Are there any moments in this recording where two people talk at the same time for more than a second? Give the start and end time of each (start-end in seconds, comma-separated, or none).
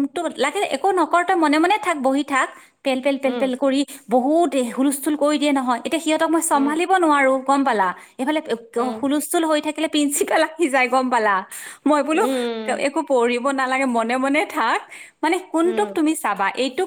none